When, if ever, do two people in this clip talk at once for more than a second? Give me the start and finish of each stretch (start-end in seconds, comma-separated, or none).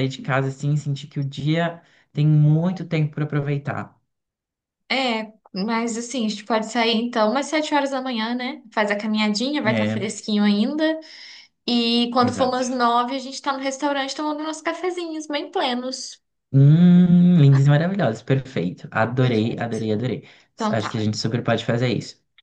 none